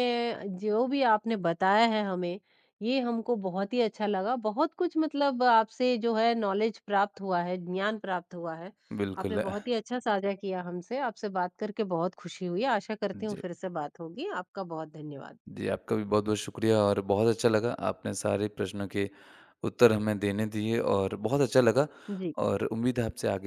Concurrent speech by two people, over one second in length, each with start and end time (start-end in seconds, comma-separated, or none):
none